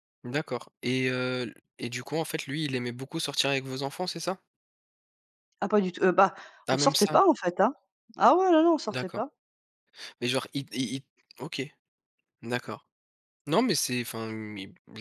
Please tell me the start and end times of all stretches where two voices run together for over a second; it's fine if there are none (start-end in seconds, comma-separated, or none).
none